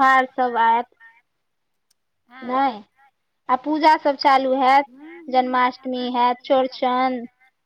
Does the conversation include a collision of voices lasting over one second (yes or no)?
yes